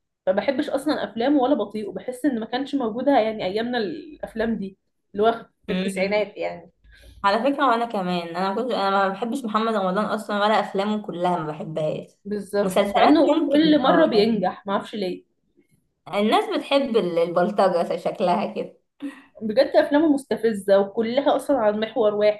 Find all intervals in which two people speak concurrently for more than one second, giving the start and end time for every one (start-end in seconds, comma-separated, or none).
12.6-14.5